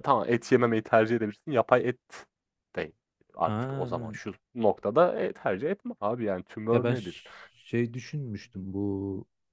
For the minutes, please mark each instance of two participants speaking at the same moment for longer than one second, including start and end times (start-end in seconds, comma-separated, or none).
none